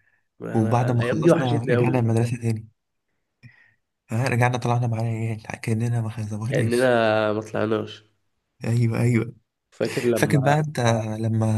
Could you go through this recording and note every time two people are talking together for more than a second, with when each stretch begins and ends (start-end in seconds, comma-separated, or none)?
0.6-2.1